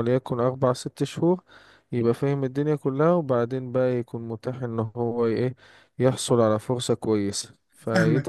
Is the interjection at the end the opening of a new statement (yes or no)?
yes